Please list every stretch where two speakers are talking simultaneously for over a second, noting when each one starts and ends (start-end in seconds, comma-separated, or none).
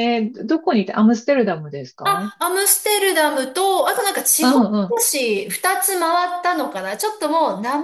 none